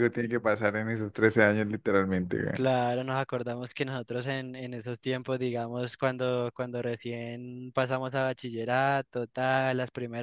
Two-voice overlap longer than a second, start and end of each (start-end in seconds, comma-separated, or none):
none